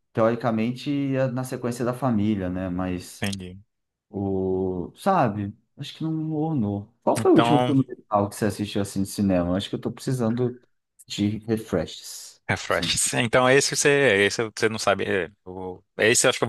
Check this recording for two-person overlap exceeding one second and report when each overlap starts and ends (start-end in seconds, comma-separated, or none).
none